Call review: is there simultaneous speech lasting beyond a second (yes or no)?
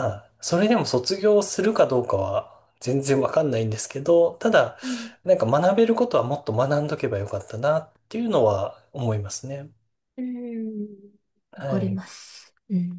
no